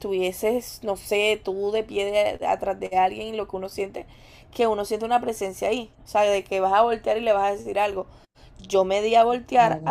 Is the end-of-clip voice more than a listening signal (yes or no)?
no